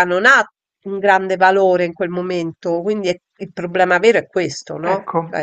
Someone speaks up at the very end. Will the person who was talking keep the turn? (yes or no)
no